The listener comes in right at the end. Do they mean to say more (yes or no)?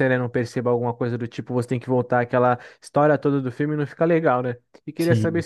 no